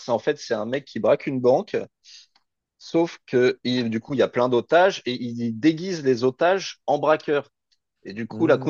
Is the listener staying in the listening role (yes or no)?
yes